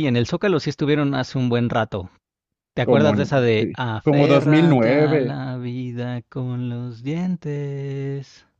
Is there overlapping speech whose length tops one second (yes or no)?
yes